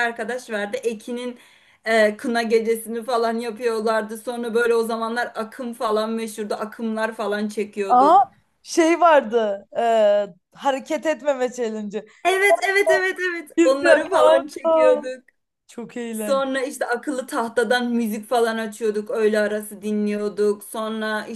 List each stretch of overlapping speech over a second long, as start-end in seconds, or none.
13.6-15.0